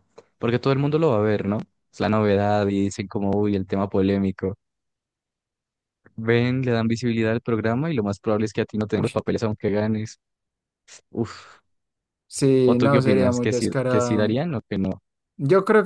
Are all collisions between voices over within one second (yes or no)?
no